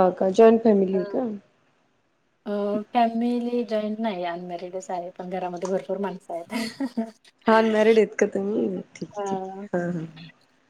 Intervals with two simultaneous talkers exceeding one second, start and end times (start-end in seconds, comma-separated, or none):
none